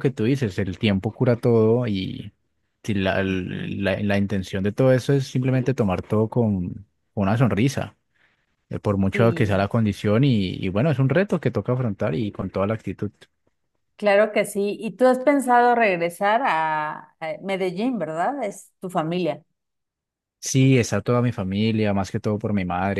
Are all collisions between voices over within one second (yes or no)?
yes